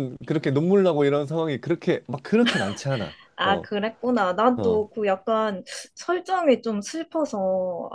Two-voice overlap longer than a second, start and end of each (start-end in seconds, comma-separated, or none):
none